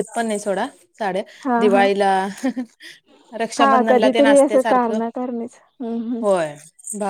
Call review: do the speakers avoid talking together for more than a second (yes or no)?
no